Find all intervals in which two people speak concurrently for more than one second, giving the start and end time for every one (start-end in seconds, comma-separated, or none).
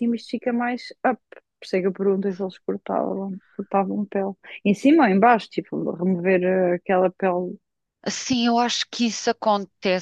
none